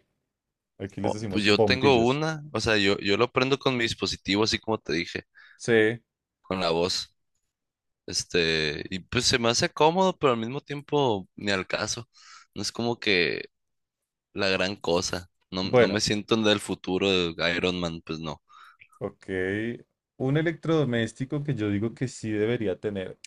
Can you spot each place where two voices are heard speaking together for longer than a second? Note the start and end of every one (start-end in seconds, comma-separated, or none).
1.0-2.2